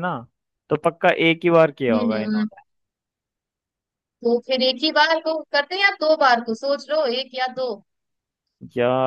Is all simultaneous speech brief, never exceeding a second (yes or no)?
yes